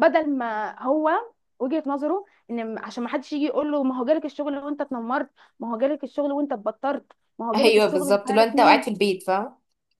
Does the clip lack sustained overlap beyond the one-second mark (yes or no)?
no